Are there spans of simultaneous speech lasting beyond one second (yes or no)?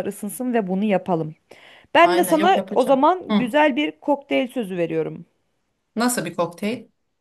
yes